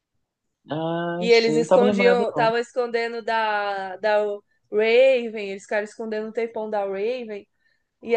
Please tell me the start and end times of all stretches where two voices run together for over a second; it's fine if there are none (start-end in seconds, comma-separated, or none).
1.2-2.5